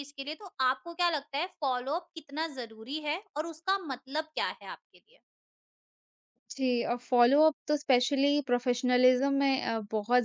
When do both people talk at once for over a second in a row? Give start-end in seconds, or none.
none